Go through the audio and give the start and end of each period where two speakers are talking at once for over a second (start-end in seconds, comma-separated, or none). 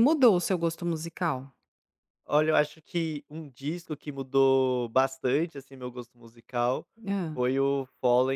none